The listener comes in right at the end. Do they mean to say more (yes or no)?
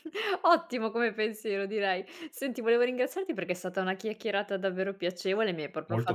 no